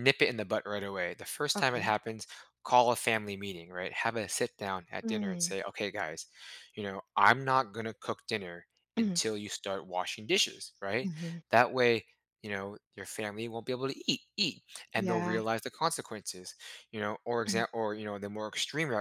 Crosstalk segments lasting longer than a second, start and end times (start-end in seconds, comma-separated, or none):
none